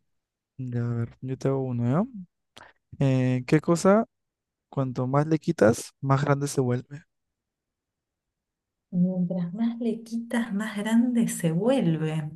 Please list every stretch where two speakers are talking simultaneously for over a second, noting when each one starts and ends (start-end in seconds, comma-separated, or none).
none